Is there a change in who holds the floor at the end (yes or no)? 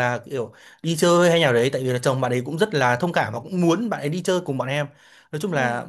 no